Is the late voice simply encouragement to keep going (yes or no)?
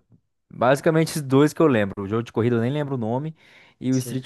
yes